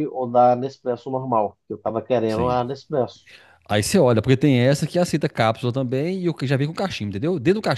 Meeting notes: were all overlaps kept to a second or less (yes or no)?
yes